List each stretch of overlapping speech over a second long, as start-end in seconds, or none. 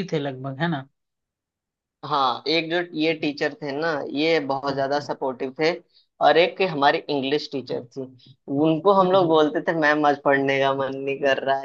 none